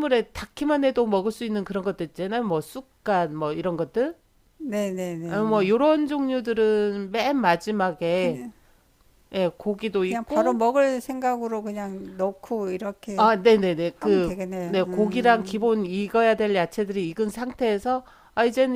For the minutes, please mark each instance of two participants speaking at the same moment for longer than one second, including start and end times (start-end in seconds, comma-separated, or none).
14.0-15.7